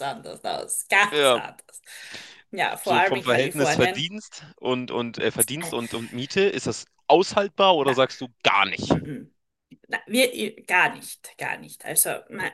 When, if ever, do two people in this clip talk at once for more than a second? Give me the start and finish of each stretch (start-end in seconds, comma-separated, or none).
2.8-4.0